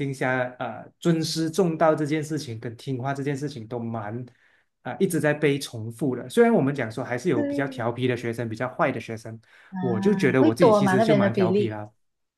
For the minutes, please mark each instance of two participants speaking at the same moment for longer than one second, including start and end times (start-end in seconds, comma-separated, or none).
10.4-11.8